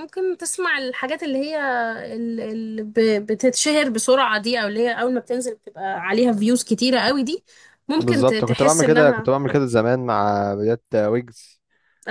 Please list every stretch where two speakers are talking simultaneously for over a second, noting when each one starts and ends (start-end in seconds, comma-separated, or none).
8.0-9.3